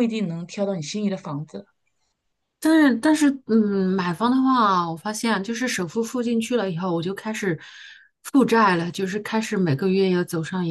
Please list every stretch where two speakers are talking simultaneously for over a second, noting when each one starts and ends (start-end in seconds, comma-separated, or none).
none